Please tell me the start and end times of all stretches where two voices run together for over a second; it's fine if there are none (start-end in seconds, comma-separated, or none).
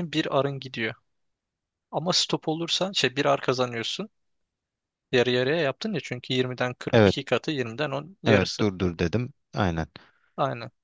none